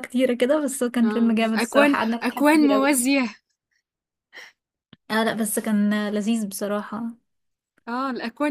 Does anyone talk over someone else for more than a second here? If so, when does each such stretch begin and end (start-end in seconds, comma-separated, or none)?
1.0-3.0